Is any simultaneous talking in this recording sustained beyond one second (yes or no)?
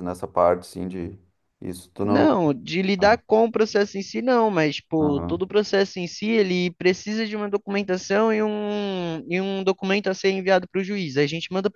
no